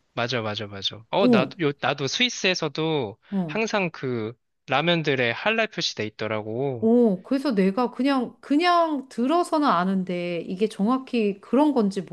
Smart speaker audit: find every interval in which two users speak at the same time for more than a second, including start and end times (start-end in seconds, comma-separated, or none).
none